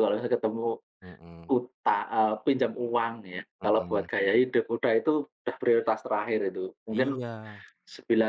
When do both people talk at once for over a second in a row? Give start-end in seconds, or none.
none